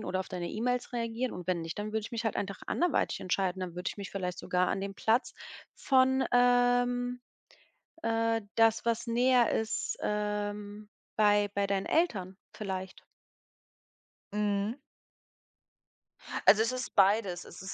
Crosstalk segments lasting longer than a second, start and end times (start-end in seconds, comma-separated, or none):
none